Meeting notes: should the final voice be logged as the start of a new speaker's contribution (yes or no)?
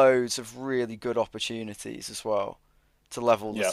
no